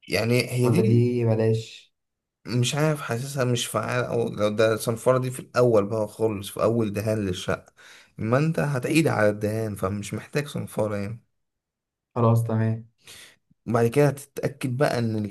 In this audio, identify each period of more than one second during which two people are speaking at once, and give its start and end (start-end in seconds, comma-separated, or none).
none